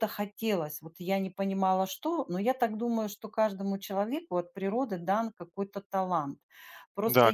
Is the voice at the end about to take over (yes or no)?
yes